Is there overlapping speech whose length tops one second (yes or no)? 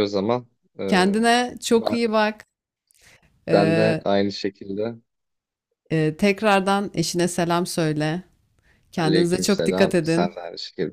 yes